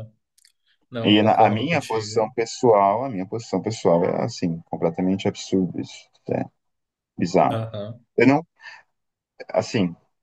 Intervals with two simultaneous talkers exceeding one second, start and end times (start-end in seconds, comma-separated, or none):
1.0-2.3